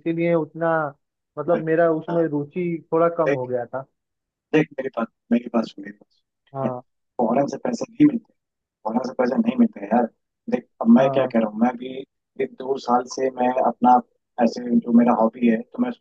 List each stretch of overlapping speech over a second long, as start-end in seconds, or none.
none